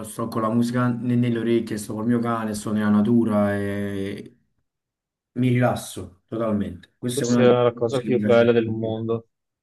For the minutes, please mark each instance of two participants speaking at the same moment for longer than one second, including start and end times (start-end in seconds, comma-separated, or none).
7.0-9.0